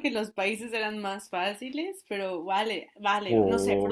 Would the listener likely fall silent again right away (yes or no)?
no